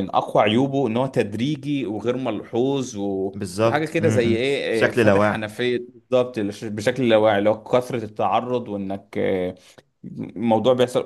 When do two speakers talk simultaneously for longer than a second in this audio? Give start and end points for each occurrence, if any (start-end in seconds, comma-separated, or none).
3.3-5.4